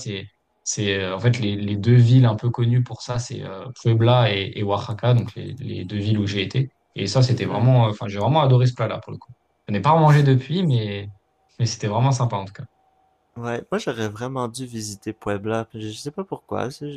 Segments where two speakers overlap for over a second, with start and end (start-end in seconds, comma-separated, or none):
none